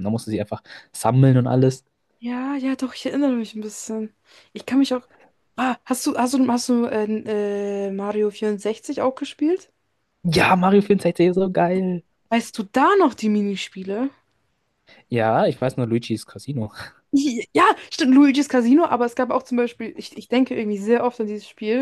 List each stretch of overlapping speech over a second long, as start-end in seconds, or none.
none